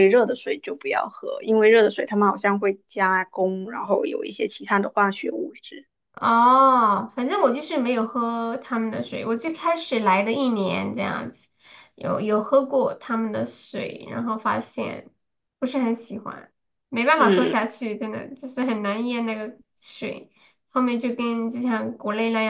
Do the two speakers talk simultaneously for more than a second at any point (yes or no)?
no